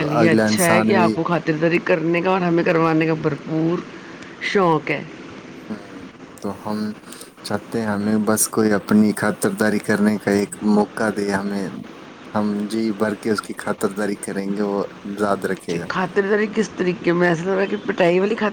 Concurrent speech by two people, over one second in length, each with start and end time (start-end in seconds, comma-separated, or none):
none